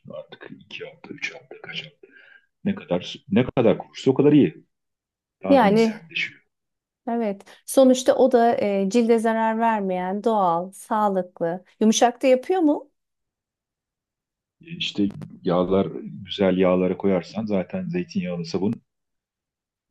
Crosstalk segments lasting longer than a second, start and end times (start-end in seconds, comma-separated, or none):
none